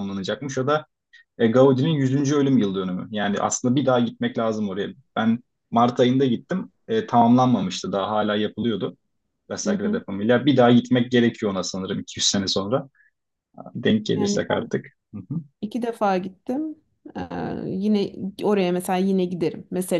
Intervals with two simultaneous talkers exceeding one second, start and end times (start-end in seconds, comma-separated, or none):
none